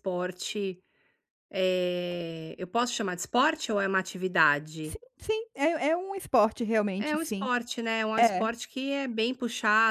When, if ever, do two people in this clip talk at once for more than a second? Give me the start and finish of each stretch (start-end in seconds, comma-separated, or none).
none